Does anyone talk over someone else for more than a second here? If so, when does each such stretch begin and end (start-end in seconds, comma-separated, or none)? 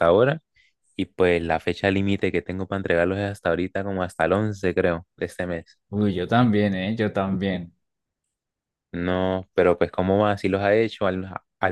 none